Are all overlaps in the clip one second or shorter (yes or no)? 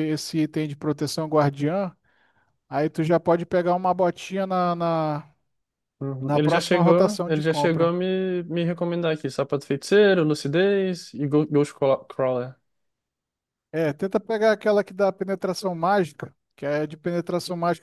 no